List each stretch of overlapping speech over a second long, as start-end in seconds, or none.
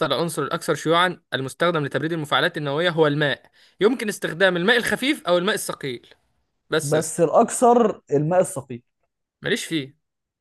none